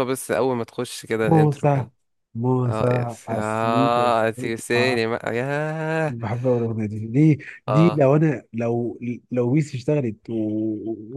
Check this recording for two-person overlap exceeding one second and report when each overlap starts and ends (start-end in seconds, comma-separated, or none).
2.7-5.0